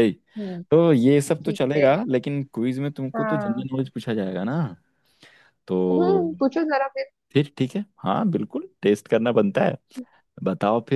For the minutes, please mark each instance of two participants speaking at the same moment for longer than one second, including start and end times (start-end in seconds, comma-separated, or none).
none